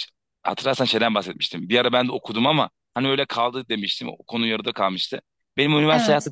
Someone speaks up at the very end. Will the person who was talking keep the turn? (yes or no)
yes